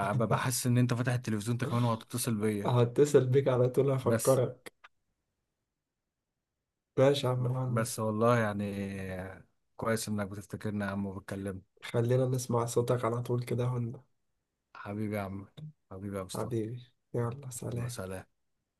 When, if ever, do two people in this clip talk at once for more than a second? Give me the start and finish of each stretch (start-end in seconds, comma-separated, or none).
none